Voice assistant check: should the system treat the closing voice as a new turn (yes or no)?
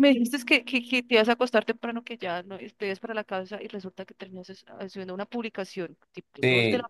yes